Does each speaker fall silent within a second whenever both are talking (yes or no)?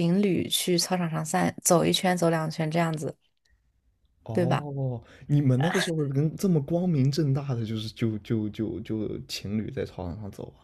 yes